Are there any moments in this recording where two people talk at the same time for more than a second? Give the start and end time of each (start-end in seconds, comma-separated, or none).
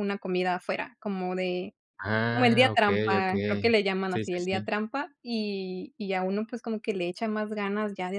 2.3-4.7